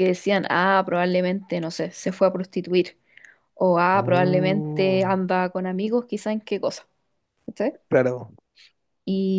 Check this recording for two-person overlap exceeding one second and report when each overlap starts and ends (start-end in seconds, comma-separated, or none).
3.9-5.2